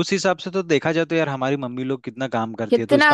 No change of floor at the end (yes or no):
yes